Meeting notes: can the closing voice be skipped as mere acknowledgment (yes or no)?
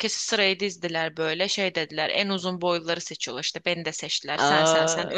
yes